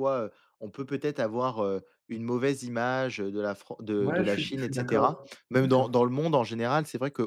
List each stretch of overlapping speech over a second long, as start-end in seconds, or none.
4.0-5.9